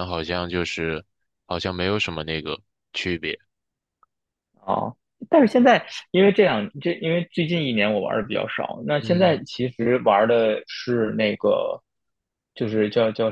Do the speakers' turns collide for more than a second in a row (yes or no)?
no